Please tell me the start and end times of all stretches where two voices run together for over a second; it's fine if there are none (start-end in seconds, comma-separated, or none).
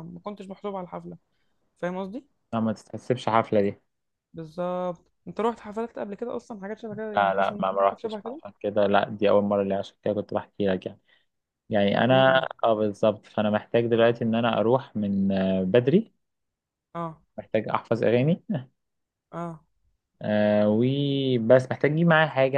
7.2-8.4